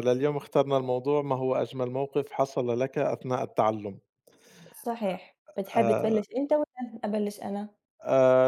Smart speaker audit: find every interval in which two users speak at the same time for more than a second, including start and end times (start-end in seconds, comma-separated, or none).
none